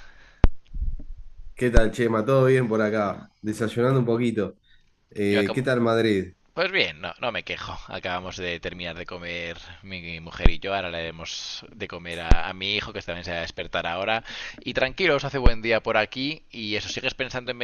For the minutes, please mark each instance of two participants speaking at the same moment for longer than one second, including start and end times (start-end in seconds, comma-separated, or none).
none